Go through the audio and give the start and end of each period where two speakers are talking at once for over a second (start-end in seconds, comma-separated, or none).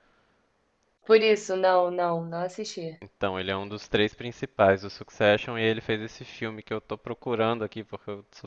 none